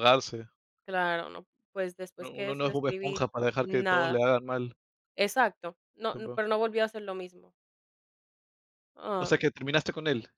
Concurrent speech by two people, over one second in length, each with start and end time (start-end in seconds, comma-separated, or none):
2.2-4.2